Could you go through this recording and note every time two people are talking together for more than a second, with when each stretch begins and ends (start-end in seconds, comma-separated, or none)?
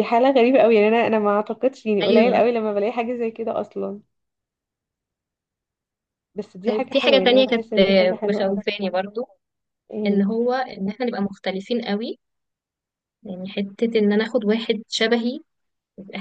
6.7-8.6